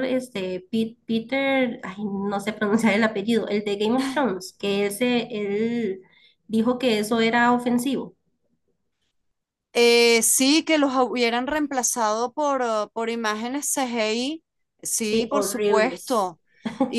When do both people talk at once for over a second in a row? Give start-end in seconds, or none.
15.0-16.4